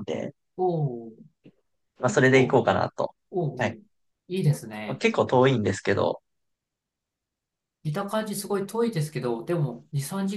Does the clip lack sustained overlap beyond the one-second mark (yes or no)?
yes